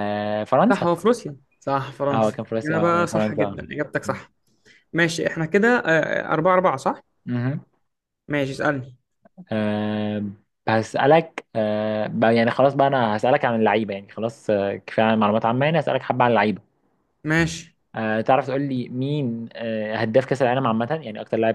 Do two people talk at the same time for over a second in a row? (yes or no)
yes